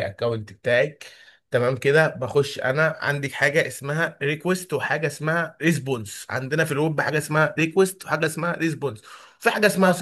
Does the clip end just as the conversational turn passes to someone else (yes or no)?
no